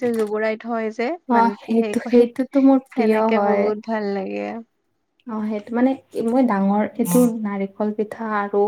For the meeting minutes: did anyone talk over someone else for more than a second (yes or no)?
yes